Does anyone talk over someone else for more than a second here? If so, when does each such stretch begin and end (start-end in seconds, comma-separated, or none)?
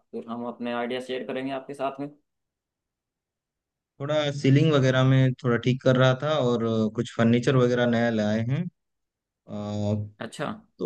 none